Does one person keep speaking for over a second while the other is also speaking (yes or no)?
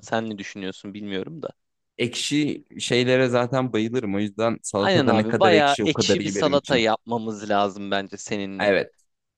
yes